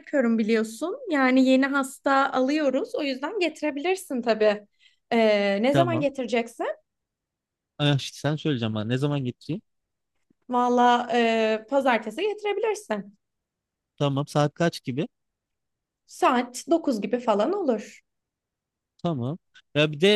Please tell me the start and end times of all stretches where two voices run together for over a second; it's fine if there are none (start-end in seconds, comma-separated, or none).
none